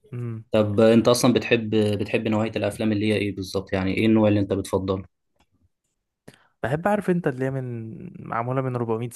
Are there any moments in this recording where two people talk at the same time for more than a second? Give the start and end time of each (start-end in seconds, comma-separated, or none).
none